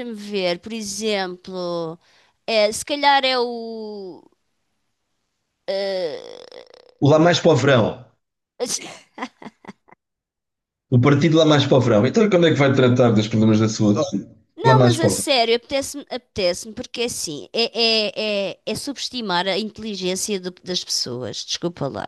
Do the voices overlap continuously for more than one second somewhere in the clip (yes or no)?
no